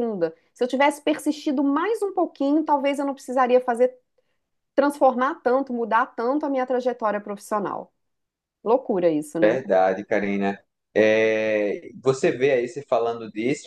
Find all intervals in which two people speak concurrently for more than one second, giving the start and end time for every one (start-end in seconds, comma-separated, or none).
none